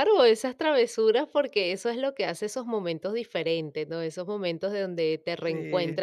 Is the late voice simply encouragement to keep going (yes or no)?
yes